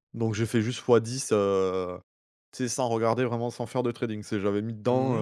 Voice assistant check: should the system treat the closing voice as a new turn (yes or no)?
yes